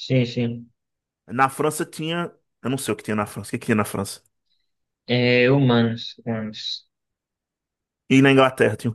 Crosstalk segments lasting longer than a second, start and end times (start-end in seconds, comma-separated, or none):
none